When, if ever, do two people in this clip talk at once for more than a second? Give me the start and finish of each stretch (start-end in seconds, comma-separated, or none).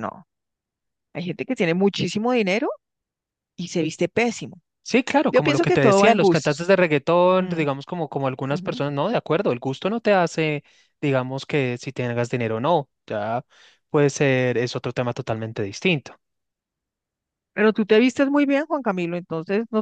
5.3-6.7